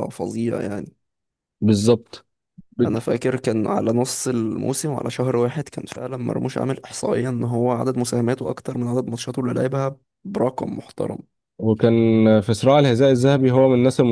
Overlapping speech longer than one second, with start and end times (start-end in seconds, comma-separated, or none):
none